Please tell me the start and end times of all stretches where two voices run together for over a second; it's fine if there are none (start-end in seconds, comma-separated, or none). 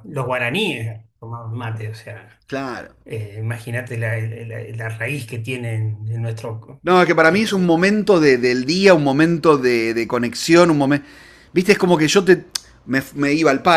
none